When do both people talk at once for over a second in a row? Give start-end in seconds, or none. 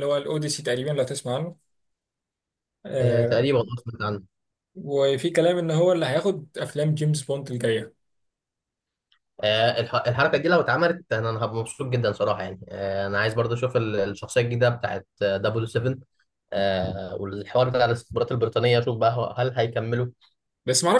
none